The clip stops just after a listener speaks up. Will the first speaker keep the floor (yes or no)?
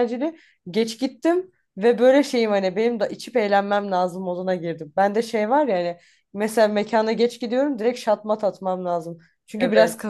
yes